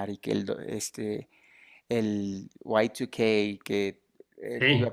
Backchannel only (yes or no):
yes